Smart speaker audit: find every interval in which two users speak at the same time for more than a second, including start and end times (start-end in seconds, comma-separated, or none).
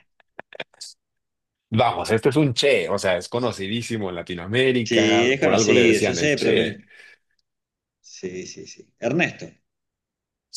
4.8-6.8